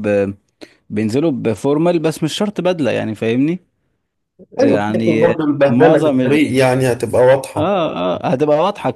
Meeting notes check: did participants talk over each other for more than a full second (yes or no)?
yes